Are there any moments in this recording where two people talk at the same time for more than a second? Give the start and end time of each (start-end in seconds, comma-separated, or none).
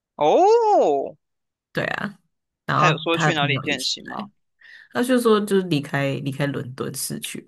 2.7-4.3